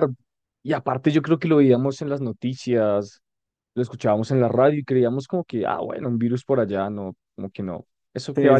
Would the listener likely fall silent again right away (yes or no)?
no